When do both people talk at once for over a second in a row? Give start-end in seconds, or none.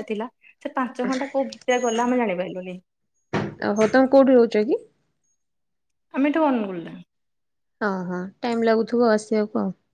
none